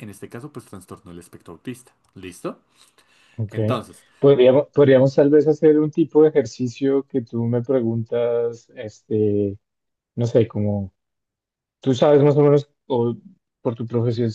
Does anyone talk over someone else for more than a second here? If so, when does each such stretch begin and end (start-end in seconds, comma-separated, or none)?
none